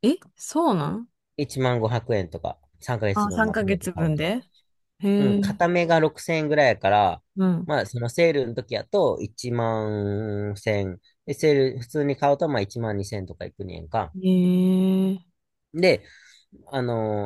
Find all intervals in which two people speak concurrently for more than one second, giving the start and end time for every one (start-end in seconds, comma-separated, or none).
3.1-4.3